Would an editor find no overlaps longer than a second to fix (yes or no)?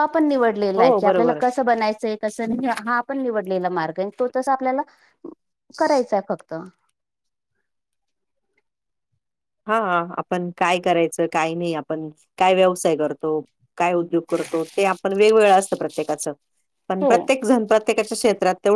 yes